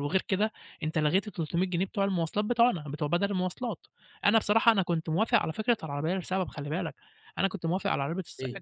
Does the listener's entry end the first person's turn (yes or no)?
no